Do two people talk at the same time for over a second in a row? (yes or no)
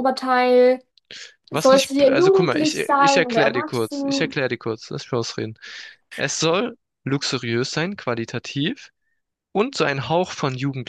yes